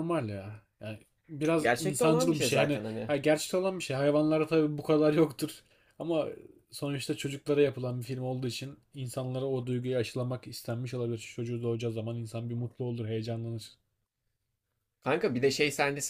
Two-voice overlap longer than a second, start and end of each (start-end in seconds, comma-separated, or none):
1.6-3.1